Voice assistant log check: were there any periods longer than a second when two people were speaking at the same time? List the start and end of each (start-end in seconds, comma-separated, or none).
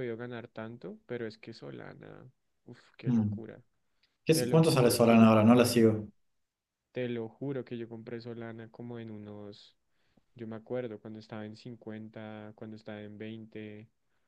4.3-5.8